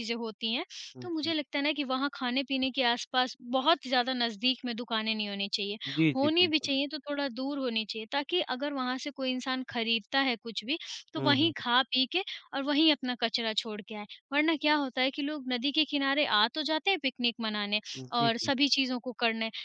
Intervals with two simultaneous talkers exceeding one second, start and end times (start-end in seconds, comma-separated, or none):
none